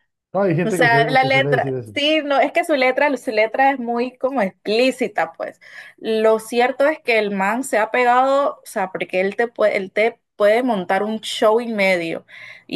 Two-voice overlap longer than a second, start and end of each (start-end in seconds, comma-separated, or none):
0.6-1.9